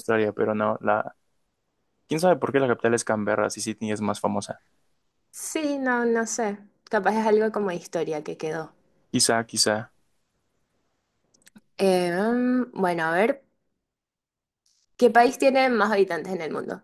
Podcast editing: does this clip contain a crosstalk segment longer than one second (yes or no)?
no